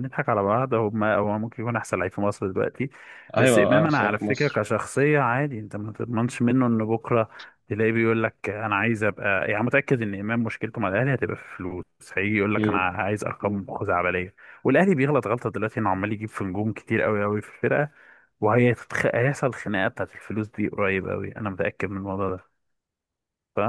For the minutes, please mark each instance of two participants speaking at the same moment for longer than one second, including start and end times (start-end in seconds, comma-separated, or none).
3.4-4.6